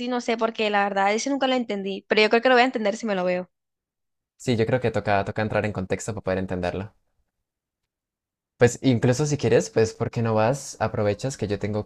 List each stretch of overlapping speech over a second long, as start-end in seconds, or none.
none